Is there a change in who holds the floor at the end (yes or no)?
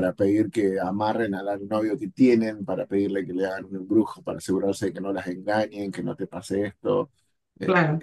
no